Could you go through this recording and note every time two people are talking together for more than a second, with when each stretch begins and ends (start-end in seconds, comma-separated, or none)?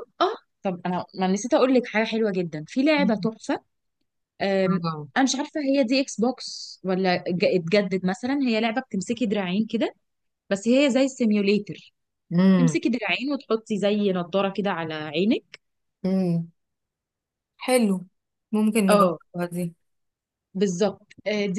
none